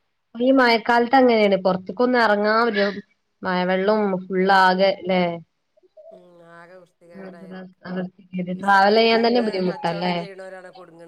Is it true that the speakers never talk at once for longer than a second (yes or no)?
no